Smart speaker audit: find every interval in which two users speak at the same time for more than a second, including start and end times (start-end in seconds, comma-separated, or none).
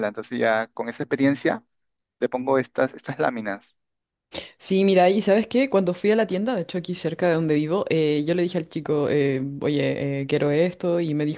none